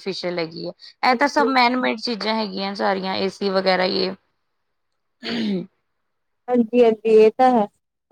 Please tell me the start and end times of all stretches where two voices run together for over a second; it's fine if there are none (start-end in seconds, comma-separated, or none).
none